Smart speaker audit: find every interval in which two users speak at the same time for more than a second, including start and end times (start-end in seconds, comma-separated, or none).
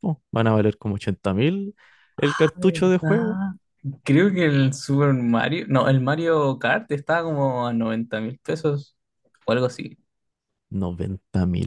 2.2-3.4